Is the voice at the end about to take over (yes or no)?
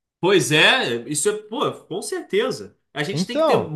no